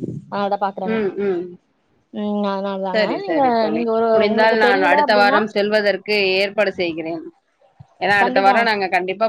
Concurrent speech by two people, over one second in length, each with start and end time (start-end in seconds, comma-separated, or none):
2.9-5.4